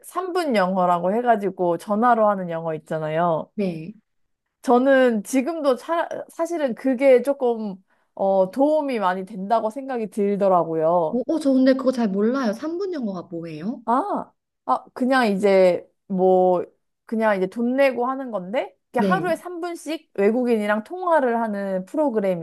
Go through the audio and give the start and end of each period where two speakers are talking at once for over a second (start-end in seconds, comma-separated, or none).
none